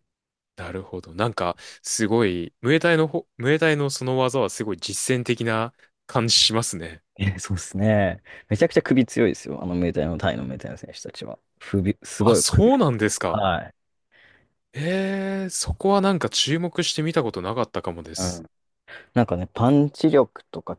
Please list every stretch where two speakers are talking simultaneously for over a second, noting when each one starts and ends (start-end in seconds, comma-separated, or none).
12.2-13.4